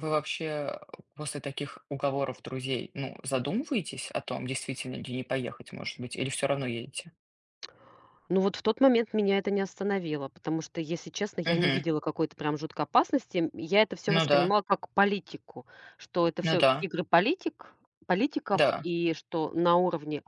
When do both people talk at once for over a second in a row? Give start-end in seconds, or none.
none